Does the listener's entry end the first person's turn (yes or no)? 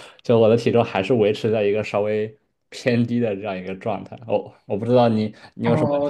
yes